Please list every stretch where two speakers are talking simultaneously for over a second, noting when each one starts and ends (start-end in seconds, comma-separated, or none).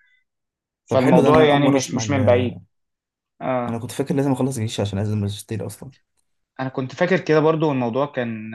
0.9-2.6